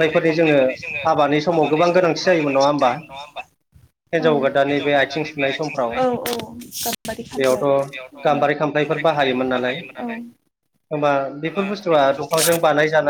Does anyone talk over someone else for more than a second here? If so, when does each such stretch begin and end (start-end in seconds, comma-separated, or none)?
none